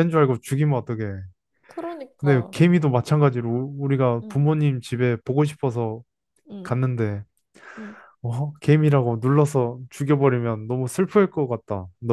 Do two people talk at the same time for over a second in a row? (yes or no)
no